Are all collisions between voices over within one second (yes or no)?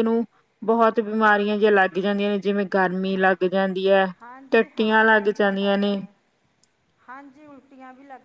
no